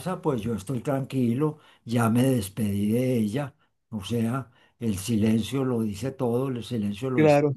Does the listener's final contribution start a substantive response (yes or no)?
yes